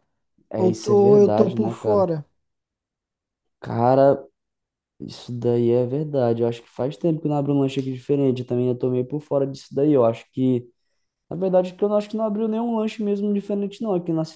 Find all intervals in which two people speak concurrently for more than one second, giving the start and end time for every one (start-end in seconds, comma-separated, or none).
0.6-2.1